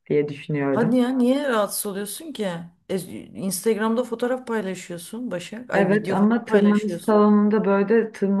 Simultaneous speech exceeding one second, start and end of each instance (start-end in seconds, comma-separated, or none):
5.7-7.2